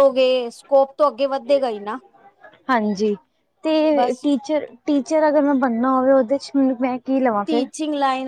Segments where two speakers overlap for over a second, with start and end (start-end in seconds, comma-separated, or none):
none